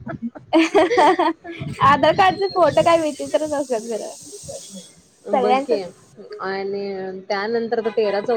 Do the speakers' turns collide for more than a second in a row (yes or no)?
no